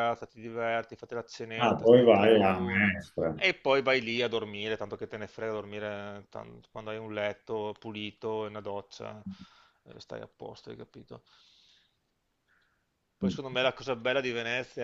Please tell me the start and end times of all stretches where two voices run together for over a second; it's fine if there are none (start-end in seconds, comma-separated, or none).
1.6-2.9